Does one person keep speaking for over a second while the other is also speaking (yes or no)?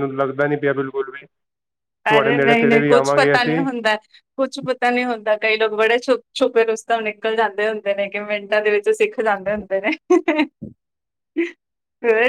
yes